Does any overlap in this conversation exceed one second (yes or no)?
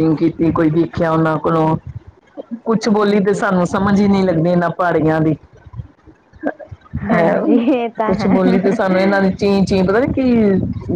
yes